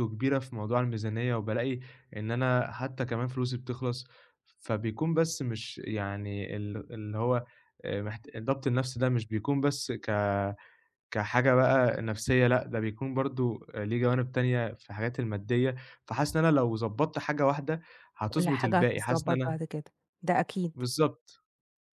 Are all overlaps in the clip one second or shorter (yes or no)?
no